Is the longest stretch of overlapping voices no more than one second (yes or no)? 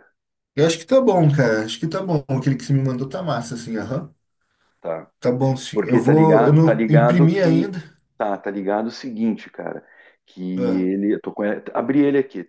no